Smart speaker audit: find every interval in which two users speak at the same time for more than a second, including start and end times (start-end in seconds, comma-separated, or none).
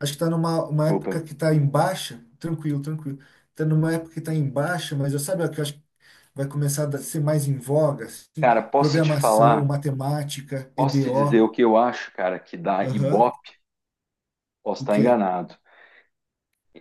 8.4-9.7